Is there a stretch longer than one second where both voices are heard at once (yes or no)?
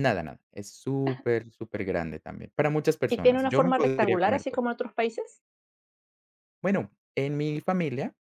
yes